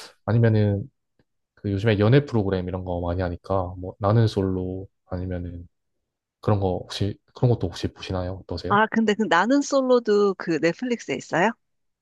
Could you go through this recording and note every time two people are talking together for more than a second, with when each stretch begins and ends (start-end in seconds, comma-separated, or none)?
none